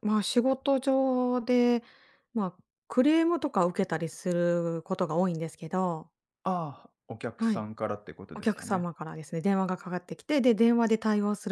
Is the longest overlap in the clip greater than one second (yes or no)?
no